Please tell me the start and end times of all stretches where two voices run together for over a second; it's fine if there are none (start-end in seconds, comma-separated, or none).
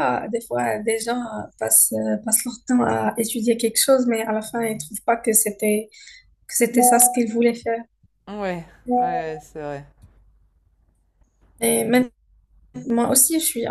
none